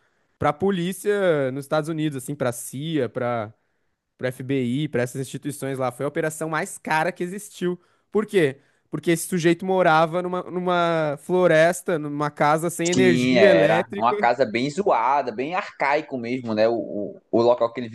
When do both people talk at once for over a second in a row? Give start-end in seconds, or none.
12.9-14.2